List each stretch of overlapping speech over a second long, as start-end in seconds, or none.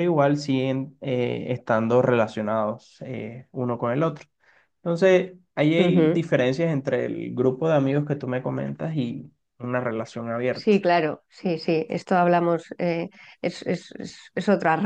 none